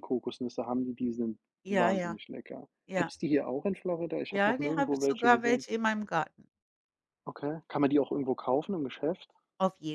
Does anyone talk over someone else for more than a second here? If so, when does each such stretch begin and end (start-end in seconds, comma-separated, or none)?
4.3-5.7